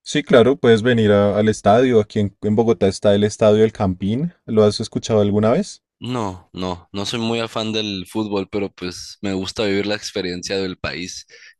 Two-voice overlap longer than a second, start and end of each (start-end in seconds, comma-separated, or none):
none